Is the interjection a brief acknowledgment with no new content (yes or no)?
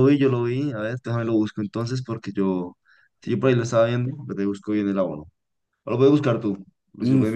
no